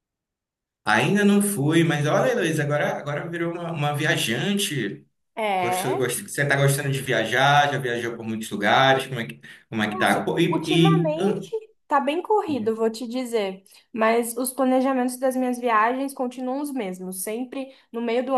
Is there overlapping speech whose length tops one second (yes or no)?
yes